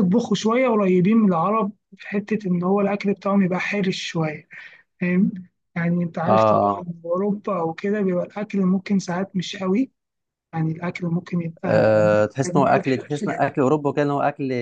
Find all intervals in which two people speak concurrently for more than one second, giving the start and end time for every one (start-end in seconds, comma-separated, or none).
11.6-12.9